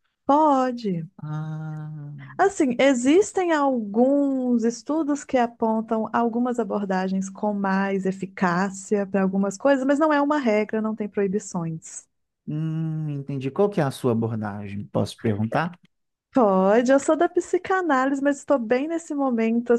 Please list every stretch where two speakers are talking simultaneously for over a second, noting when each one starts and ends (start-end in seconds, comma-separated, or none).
none